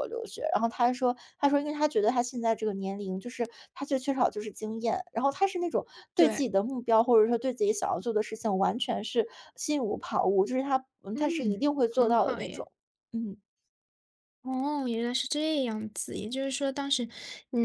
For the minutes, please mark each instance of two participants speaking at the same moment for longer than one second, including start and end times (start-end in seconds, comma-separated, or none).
11.1-12.7